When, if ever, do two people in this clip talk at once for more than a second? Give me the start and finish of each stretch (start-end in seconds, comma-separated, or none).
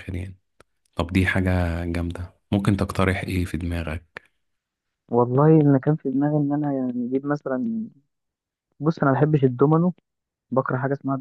none